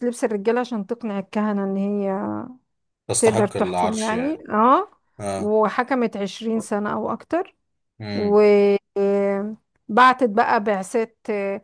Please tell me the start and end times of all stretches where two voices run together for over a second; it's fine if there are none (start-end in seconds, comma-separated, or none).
3.2-4.4